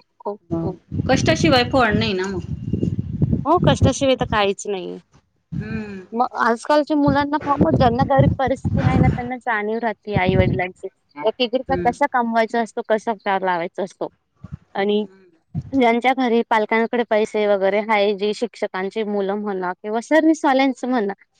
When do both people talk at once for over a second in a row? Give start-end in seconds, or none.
none